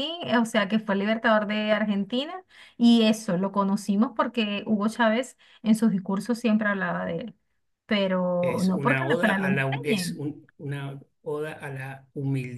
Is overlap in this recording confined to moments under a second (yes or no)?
no